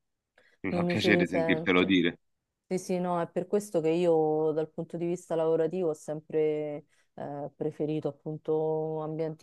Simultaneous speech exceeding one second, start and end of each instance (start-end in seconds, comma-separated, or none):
0.7-2.0